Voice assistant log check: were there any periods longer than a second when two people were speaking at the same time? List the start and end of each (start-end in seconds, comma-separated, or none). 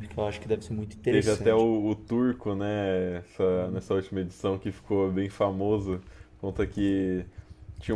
none